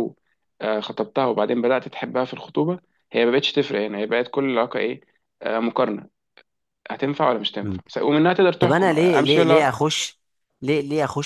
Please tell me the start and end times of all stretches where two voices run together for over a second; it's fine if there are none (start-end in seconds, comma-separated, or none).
8.6-9.8